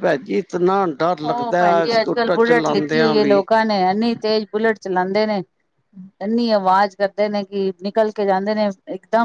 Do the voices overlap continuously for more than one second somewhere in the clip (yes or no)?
yes